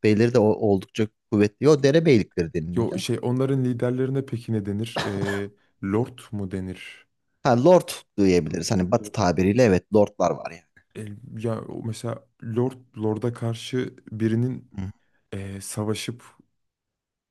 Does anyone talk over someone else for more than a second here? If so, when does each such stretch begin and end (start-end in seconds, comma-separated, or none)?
none